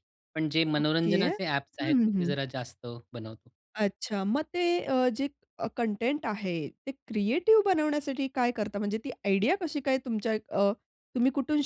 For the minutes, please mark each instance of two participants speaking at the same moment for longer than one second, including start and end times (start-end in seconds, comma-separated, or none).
0.8-2.4